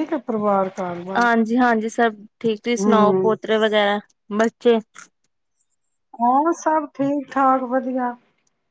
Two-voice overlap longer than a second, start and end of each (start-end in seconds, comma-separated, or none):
none